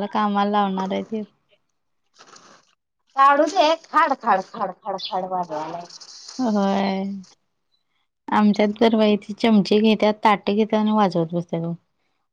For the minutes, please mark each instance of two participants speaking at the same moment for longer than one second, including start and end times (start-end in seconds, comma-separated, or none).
none